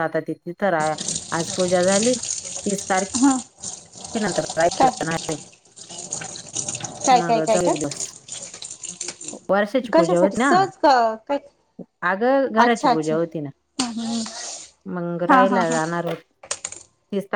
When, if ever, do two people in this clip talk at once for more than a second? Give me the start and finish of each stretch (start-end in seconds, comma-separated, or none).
none